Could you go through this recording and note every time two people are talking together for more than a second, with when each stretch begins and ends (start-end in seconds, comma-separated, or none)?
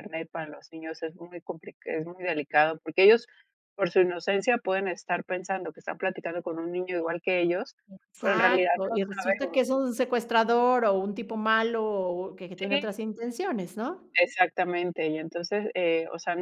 8.2-9.8